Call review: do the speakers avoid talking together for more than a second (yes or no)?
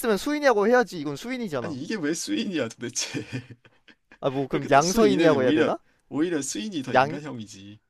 no